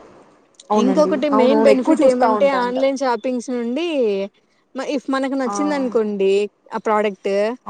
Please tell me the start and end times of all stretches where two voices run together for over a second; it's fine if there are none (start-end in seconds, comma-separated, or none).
0.8-2.8